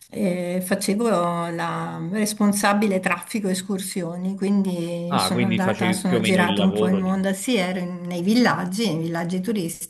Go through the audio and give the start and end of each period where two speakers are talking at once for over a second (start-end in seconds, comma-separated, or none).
5.1-7.1